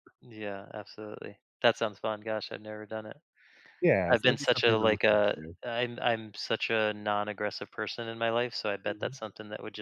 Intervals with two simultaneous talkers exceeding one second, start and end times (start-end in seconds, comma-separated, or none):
4.1-5.5